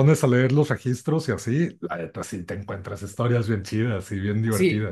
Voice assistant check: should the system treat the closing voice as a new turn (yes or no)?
yes